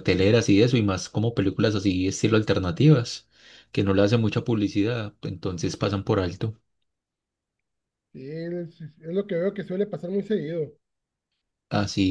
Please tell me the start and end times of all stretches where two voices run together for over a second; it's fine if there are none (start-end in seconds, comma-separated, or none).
none